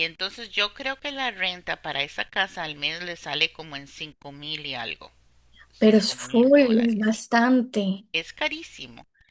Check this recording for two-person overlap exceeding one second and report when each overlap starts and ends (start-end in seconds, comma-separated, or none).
5.8-7.2